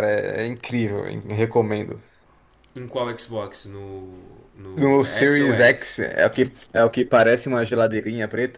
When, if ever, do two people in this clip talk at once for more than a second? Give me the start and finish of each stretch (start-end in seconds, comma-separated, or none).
4.7-6.0